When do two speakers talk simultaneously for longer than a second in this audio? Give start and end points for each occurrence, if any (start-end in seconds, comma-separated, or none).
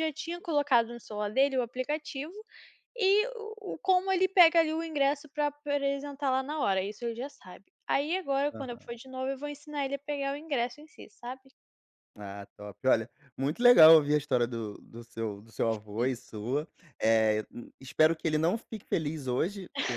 none